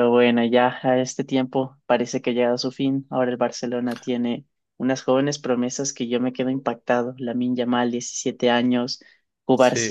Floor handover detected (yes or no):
no